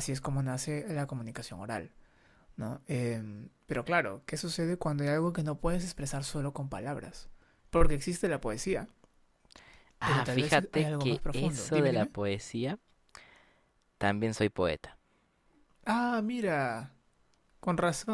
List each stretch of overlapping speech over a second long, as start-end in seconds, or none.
10.0-12.1